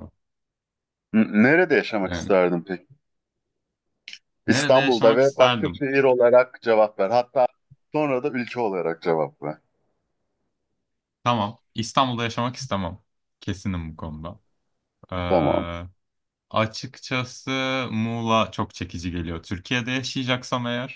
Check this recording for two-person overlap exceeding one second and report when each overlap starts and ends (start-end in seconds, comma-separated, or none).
4.5-5.8